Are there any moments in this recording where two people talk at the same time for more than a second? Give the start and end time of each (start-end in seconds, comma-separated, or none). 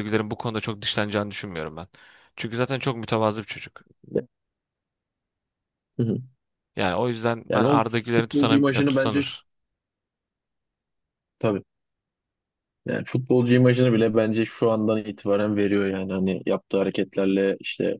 7.5-9.4